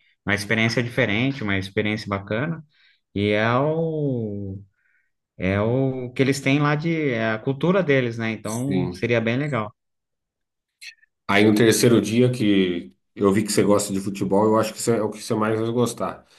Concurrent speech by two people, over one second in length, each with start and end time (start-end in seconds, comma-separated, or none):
none